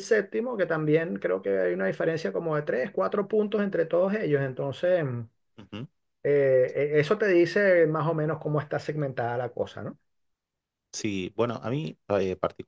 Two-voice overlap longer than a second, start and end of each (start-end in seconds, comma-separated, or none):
none